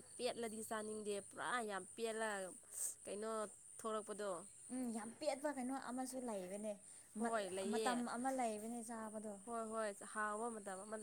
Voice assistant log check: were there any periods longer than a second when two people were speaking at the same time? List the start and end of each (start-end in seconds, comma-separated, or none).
none